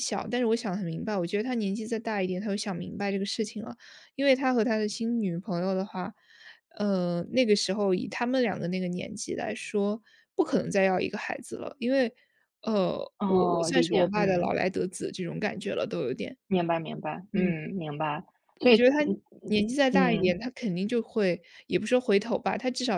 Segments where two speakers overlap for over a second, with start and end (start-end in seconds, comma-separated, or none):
13.2-14.5